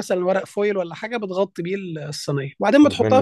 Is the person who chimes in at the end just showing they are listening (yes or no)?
yes